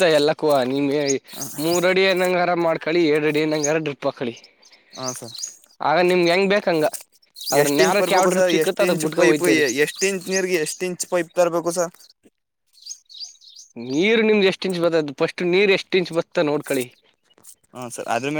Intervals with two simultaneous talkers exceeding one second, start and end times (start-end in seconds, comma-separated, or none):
7.6-9.6